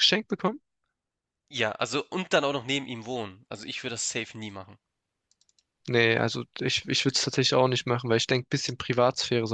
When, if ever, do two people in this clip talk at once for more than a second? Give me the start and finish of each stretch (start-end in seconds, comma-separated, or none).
none